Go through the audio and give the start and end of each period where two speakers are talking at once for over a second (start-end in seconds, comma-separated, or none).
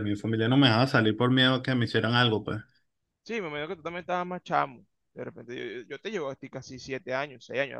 none